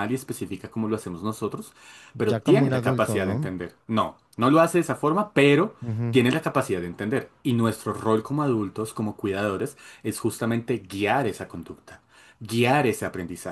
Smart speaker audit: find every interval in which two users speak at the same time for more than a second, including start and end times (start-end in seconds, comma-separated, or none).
2.1-3.5